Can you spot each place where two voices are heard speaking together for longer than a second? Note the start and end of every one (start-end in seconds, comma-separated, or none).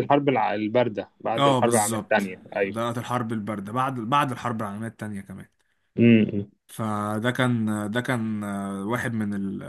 1.4-2.9